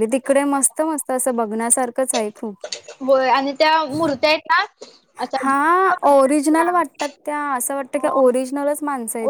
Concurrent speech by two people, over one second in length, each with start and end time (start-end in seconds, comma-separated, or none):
5.4-6.7